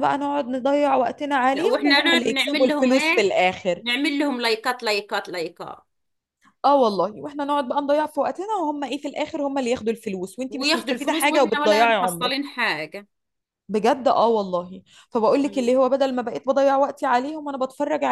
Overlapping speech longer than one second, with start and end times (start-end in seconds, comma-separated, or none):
1.5-3.3, 10.5-12.3